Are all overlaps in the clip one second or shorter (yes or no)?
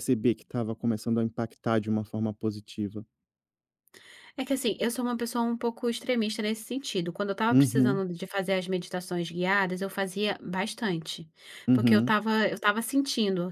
yes